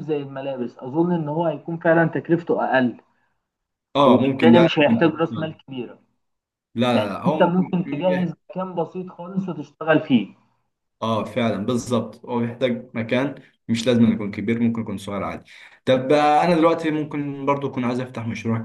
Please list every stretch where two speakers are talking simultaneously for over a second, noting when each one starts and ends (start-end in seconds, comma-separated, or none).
4.0-5.6